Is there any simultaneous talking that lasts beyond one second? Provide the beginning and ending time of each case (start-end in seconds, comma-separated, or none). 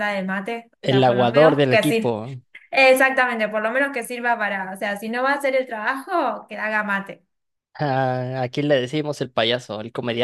0.8-2.1